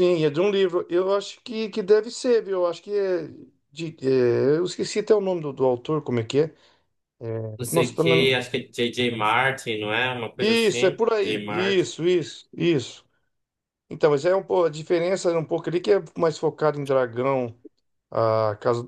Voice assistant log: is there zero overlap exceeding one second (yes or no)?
no